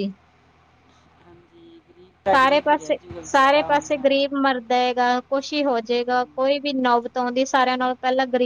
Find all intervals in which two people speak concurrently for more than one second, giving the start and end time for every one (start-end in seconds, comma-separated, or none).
2.4-4.0